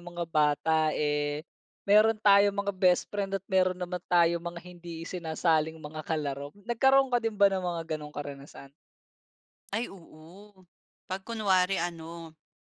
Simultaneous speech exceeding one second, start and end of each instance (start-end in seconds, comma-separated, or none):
none